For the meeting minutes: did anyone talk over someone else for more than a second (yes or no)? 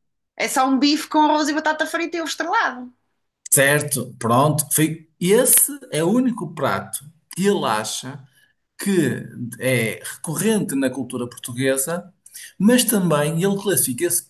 no